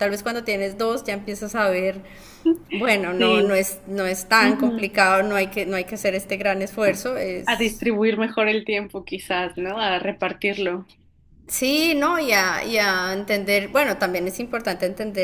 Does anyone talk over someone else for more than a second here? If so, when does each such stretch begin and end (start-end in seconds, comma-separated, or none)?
none